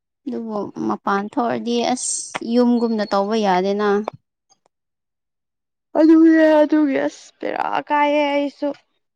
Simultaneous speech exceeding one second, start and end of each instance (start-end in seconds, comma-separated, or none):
none